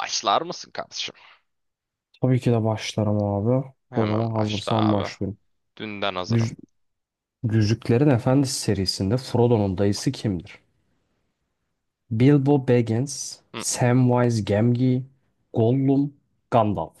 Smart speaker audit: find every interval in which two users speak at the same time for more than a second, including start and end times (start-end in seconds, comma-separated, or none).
3.9-5.2